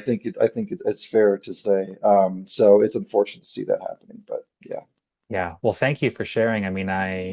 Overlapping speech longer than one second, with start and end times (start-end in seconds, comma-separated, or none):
none